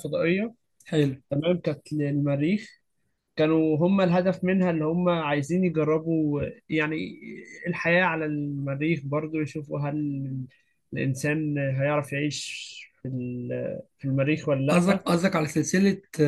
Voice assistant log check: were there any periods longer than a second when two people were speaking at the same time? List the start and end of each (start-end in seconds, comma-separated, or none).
none